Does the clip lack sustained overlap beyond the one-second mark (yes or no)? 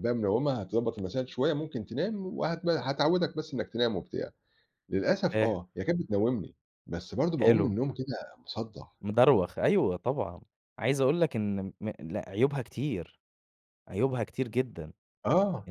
yes